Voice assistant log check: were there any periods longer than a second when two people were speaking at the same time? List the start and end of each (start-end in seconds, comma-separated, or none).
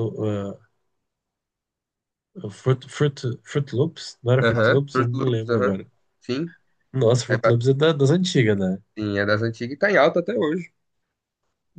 4.5-5.7